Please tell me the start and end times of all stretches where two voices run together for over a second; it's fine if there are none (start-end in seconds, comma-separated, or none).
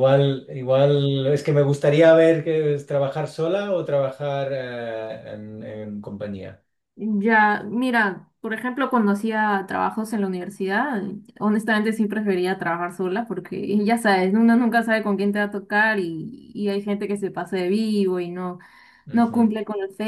none